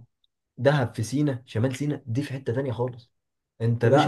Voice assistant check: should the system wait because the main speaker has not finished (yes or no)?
no